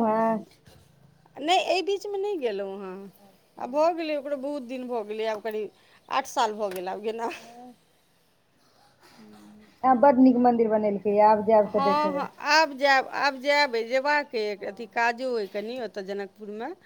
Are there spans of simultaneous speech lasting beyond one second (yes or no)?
no